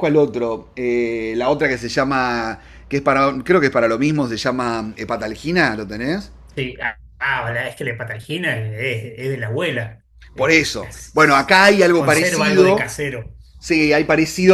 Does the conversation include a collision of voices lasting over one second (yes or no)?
yes